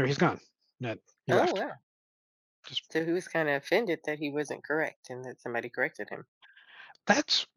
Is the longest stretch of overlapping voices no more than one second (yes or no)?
yes